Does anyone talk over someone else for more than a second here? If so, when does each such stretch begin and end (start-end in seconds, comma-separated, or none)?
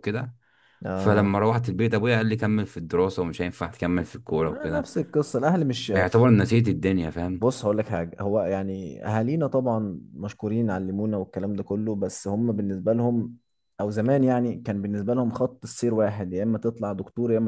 none